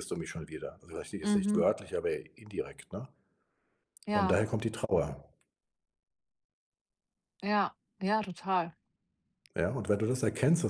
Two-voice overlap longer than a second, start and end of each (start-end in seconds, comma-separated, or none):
none